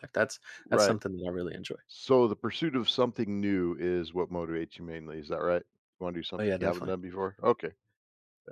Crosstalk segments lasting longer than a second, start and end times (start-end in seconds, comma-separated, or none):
none